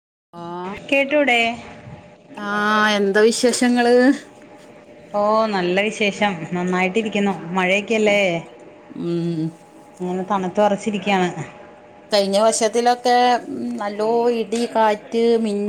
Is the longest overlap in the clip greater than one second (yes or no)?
no